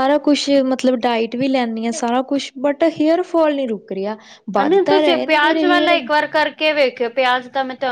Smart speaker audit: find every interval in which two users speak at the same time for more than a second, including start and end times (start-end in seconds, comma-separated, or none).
4.6-6.0